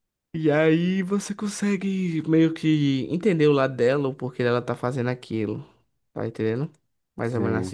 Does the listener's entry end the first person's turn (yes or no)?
yes